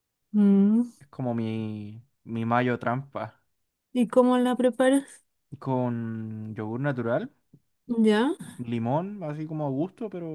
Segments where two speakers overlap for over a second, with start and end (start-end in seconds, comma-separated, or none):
none